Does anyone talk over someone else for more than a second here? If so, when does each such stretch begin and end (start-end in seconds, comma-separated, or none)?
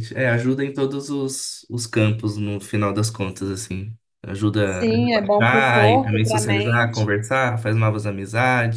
4.6-7.1